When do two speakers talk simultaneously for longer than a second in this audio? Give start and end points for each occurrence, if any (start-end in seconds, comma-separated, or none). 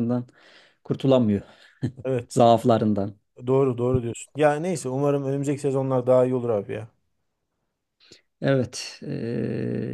none